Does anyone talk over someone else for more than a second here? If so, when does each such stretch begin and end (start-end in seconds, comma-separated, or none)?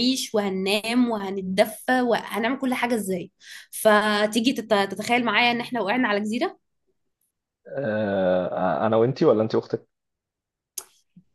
none